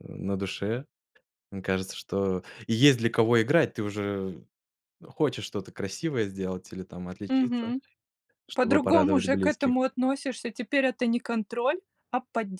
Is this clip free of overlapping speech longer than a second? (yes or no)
no